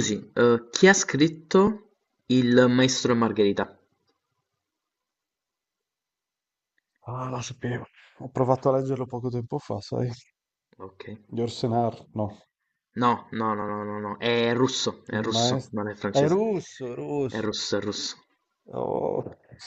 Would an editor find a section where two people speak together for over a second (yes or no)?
yes